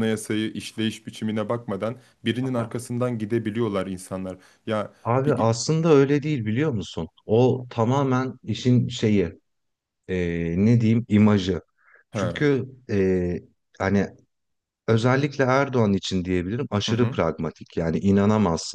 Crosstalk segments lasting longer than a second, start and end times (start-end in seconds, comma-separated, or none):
none